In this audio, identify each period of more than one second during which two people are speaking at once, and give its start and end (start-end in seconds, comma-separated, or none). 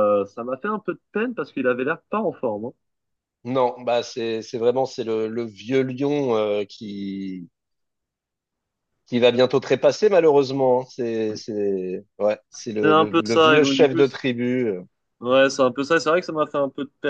12.5-14.2